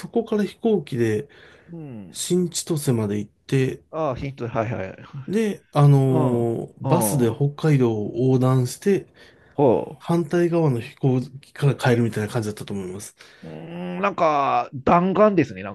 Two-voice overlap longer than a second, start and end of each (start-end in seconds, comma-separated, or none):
6.0-7.5